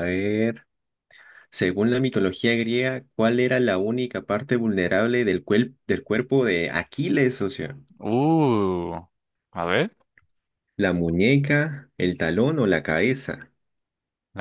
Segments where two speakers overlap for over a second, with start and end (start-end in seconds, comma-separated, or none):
none